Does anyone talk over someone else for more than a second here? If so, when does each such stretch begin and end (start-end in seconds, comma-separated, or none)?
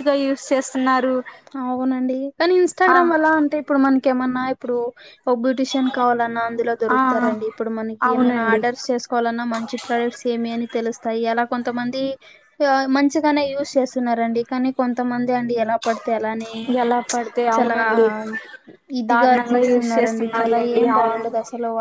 19.1-21.2